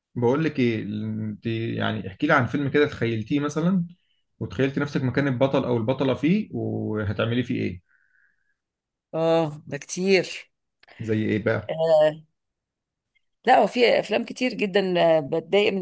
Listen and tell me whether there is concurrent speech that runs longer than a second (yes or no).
no